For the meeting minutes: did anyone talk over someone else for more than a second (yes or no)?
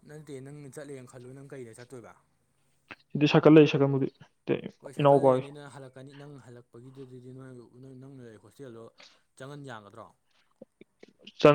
no